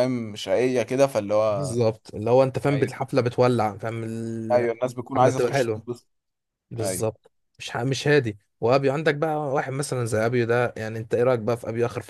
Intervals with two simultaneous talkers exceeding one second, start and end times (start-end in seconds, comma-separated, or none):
4.5-5.9